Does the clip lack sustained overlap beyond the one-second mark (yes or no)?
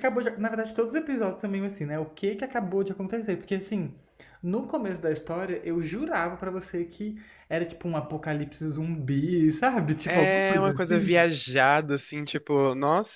no